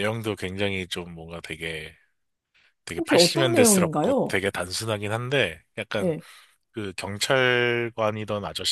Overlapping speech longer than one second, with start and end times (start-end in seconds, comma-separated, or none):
3.0-4.4